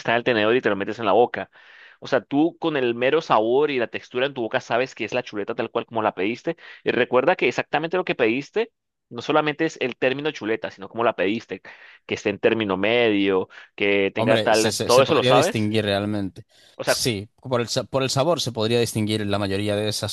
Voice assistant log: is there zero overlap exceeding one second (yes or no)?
no